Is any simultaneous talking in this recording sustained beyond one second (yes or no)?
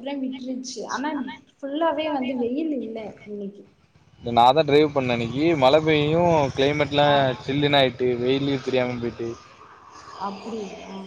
no